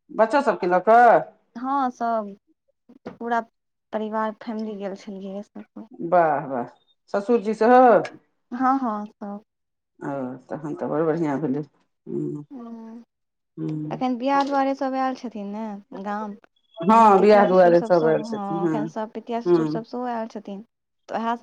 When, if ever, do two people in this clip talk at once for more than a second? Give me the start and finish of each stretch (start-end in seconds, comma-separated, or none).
16.9-18.7